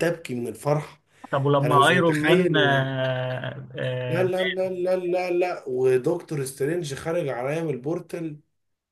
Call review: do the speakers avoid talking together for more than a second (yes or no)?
no